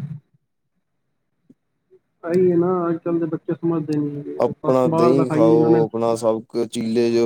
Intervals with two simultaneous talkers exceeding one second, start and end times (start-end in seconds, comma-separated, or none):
4.4-5.8